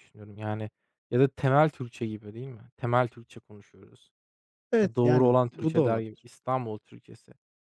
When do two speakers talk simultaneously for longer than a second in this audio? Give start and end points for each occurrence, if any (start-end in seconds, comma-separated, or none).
4.8-6.3